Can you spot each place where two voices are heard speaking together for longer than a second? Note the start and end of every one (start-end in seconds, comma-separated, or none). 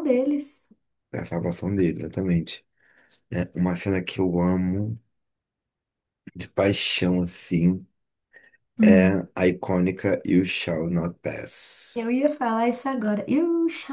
none